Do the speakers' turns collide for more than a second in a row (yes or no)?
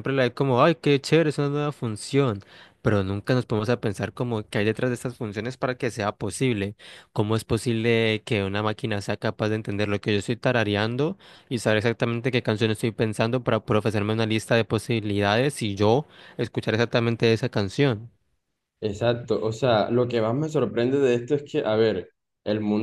no